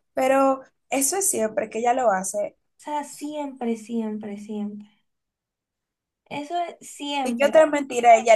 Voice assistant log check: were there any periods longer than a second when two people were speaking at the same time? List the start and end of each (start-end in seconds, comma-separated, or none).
none